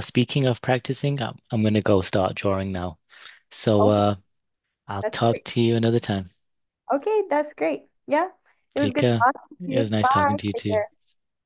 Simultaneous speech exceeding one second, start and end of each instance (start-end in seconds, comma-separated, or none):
8.8-10.8